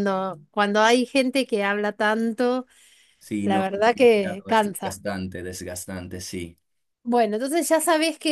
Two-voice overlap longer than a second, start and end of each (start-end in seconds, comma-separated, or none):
3.4-5.0